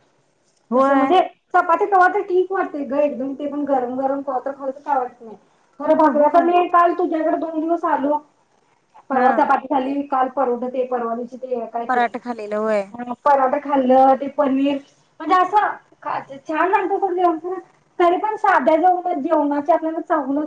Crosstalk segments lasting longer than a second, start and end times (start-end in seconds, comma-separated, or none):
none